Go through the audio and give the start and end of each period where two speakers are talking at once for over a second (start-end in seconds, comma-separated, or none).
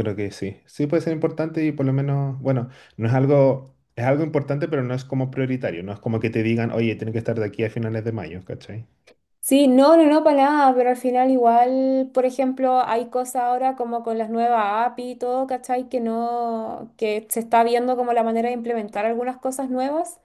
none